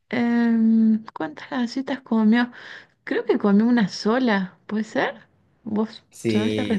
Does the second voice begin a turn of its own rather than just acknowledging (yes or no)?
yes